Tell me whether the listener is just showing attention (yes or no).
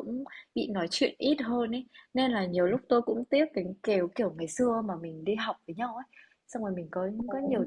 yes